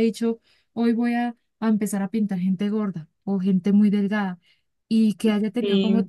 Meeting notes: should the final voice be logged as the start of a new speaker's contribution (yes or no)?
no